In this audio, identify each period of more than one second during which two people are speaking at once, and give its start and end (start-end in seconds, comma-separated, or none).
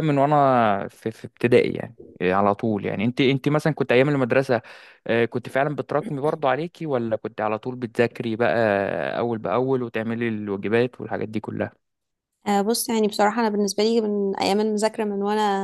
none